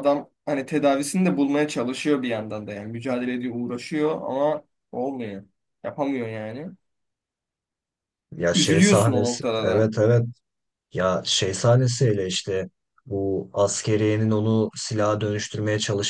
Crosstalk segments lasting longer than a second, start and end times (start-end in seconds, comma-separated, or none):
8.5-9.9